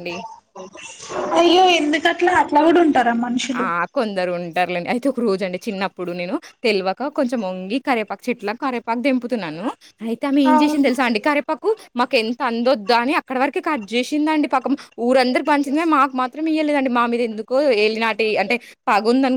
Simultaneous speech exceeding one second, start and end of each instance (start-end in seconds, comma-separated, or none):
none